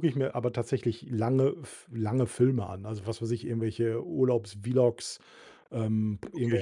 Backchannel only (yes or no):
yes